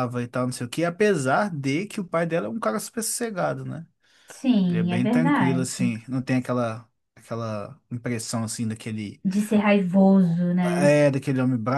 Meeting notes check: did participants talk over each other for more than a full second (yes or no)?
yes